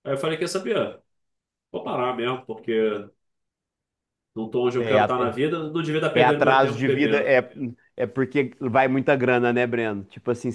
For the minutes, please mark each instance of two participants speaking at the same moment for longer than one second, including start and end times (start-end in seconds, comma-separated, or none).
6.1-7.4